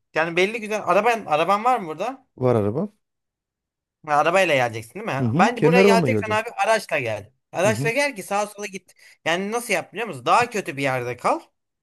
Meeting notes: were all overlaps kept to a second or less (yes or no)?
no